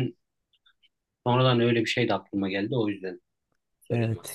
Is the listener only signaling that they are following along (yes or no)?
no